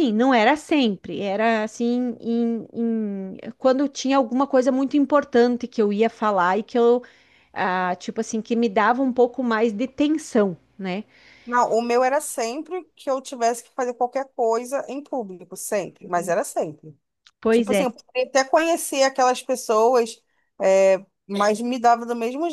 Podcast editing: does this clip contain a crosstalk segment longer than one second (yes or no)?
no